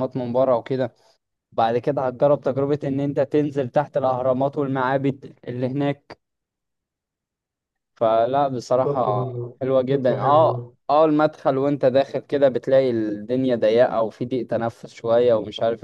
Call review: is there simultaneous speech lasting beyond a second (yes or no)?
yes